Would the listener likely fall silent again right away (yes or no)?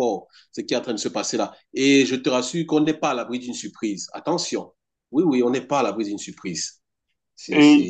no